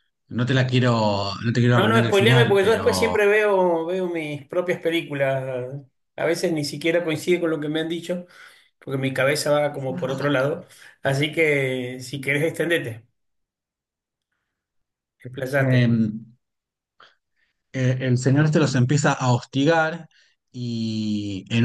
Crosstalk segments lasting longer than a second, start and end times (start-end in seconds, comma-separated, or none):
1.7-3.2